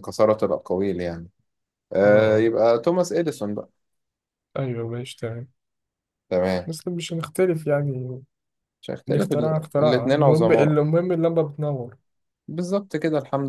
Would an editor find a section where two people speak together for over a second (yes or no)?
yes